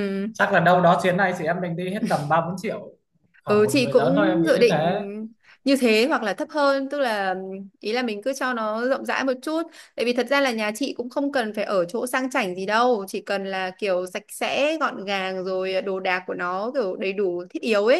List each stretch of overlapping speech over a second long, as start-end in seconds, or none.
3.5-4.8